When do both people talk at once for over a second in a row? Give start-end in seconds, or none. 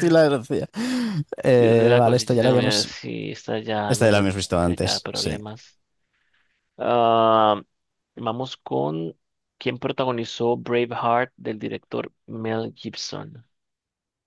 1.6-2.9, 3.9-5.4